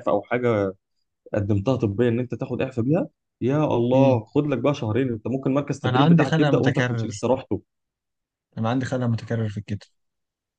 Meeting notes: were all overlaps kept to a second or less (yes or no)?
no